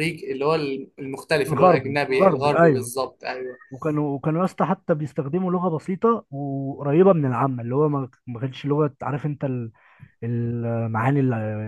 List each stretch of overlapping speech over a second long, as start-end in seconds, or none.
1.5-2.9